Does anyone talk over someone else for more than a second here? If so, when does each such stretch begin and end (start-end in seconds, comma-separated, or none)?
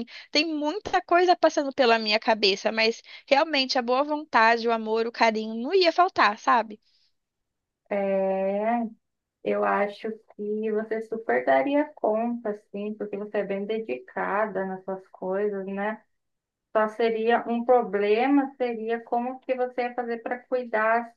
none